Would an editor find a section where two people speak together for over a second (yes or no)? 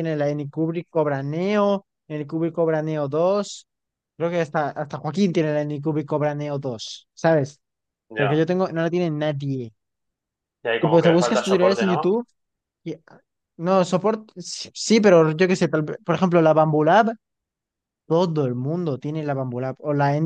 yes